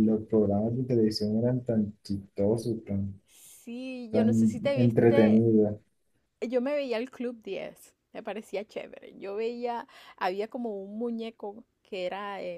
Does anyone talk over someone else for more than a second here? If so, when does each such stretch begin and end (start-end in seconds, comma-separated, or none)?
4.1-5.4